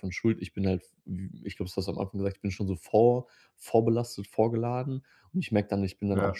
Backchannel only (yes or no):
yes